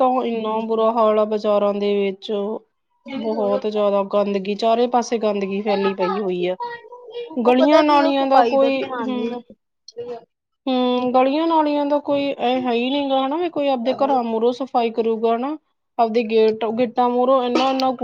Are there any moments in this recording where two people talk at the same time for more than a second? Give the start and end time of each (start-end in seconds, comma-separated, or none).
7.5-9.4